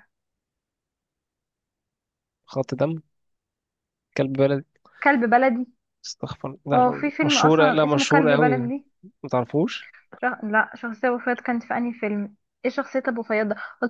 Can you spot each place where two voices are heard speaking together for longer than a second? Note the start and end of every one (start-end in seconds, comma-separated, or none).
6.7-8.6